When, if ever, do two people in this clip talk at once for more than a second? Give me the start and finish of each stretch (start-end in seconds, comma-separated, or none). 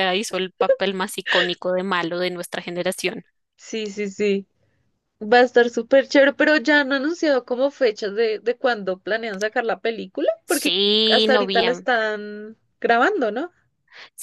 10.4-11.9